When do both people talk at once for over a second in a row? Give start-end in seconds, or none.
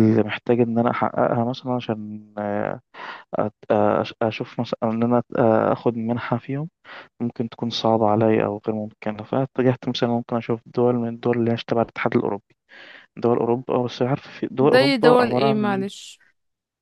14.6-15.8